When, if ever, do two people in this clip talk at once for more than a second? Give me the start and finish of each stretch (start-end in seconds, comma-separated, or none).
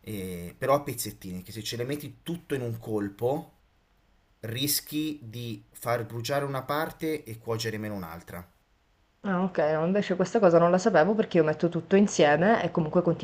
none